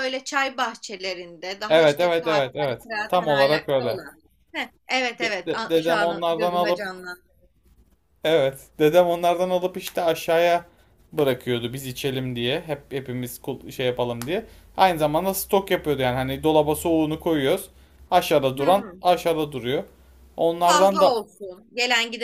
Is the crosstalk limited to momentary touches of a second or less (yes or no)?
no